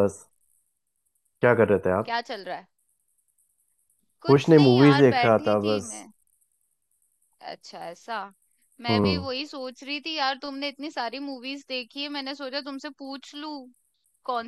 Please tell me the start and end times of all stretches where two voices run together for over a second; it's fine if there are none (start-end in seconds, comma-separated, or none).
4.3-5.9